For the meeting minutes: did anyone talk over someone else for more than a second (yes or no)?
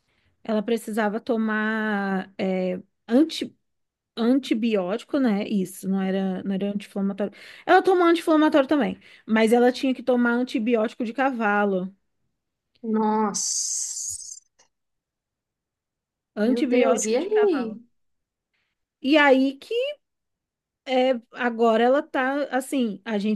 yes